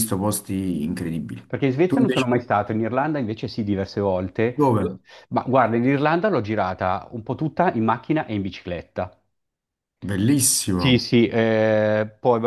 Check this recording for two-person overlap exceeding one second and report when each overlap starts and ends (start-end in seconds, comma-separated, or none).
none